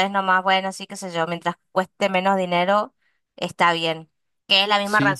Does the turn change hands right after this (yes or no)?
no